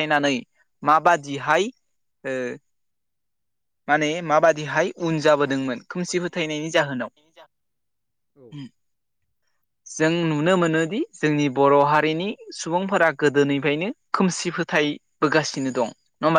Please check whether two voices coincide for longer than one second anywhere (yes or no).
yes